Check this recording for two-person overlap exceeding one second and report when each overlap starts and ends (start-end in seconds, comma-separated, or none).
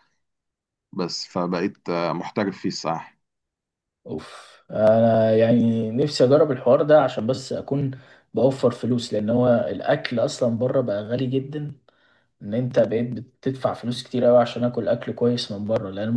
none